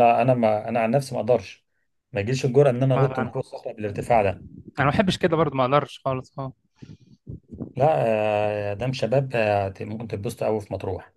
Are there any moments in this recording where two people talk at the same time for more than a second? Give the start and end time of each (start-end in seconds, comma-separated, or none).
none